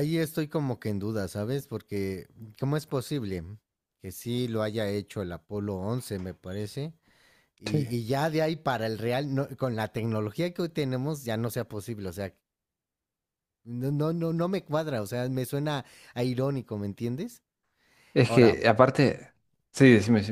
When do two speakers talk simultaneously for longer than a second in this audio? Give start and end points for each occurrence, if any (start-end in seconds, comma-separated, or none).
none